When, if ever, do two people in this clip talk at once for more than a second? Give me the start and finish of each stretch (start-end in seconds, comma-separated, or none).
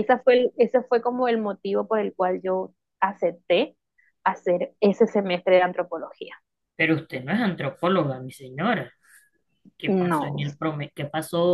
none